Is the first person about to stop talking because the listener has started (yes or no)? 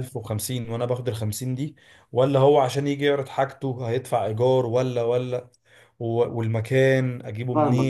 yes